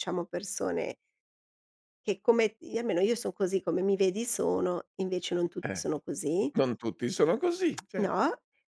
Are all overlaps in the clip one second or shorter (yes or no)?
yes